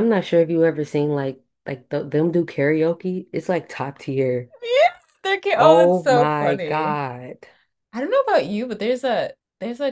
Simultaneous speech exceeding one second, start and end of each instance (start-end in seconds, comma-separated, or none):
5.5-7.0